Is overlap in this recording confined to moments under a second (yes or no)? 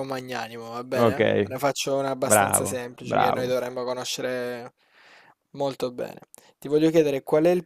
no